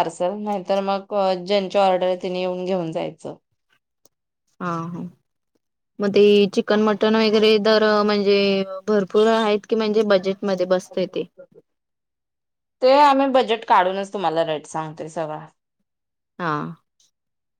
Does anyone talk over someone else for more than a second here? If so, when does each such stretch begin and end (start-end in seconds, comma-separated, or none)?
none